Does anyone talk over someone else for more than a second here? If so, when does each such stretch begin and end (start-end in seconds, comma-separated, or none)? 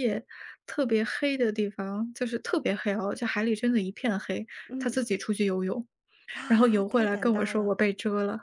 6.5-7.8